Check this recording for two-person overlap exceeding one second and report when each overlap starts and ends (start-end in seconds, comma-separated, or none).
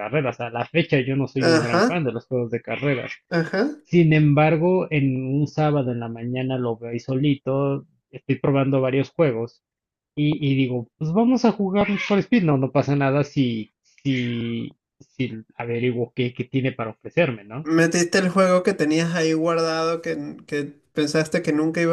none